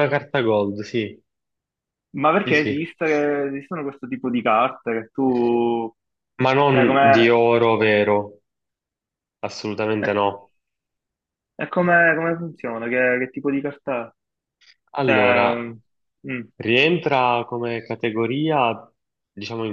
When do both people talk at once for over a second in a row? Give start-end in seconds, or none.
none